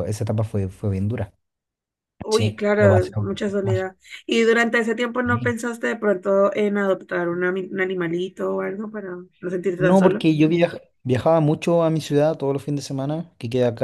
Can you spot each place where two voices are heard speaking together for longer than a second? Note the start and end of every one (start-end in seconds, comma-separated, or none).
2.3-3.9